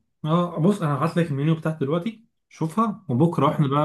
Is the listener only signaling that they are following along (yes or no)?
yes